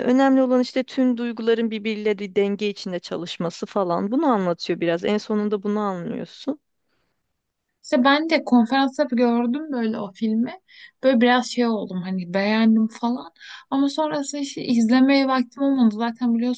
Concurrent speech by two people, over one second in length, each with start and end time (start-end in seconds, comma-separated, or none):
none